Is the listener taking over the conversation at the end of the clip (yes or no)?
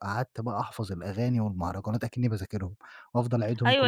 yes